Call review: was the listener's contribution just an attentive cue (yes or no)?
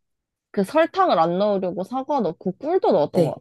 no